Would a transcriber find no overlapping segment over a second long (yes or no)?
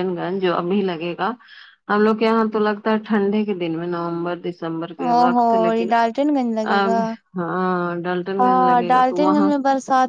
yes